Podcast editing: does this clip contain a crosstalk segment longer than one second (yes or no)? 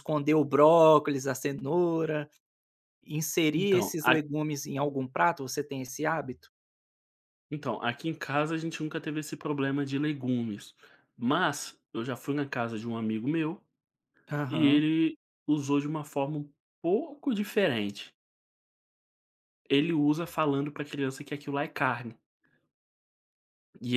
no